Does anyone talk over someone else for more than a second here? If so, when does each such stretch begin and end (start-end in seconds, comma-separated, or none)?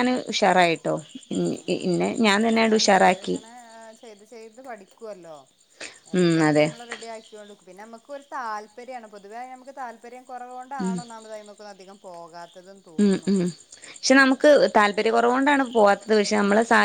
none